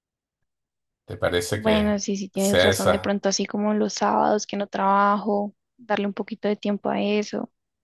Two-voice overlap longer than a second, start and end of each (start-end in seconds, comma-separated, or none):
1.5-3.2